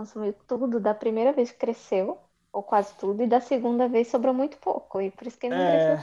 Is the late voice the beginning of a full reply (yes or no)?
yes